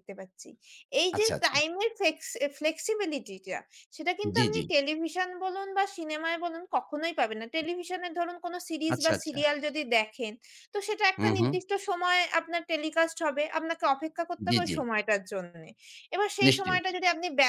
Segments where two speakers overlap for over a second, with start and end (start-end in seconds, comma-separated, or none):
none